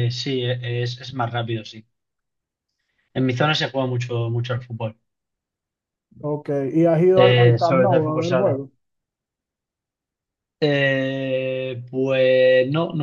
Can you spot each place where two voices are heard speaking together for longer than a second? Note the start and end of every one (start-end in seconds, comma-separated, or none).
7.1-8.6